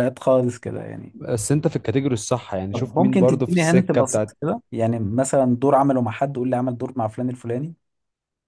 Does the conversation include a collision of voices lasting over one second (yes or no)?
yes